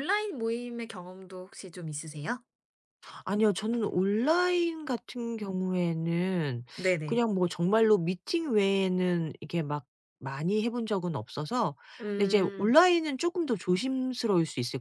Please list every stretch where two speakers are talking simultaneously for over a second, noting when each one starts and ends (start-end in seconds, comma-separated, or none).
none